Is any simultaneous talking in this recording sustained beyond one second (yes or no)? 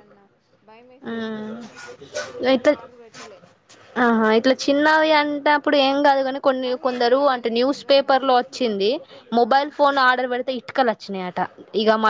yes